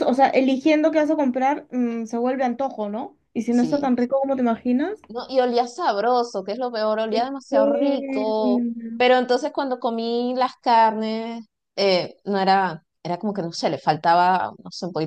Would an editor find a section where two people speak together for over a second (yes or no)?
yes